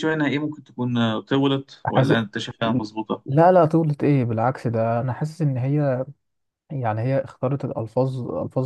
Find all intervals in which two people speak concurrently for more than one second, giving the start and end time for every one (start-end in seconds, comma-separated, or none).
none